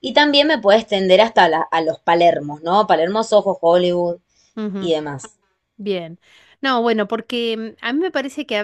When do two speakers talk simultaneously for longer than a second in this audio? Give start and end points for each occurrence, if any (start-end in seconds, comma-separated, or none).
none